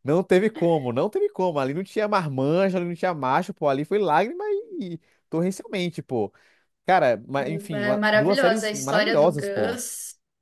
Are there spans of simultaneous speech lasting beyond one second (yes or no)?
yes